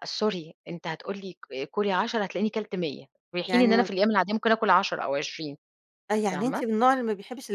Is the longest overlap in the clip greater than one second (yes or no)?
no